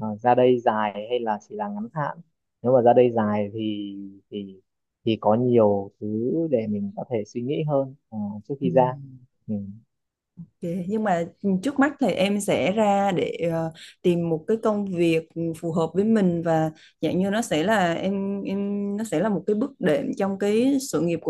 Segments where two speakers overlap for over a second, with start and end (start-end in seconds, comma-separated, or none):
none